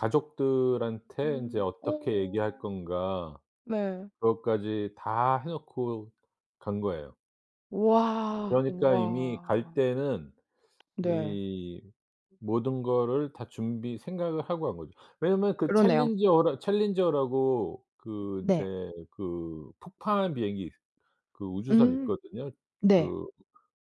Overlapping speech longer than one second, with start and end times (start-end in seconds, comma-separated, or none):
1.2-2.6, 8.5-9.8